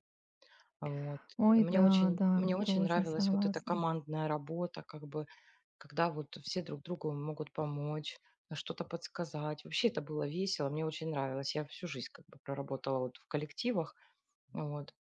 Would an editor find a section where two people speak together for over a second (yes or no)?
yes